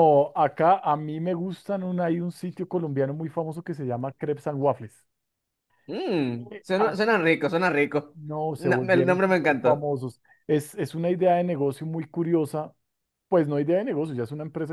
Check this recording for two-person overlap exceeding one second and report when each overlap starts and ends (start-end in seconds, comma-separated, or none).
8.1-9.9